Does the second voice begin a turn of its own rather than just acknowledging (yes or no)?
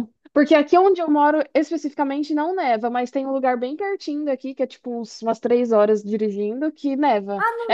yes